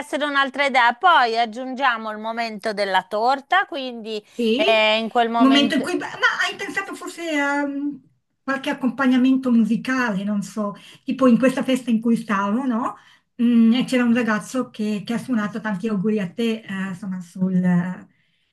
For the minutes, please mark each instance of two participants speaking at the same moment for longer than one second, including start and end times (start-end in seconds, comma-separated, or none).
none